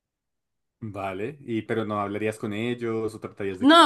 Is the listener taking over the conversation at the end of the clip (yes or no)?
yes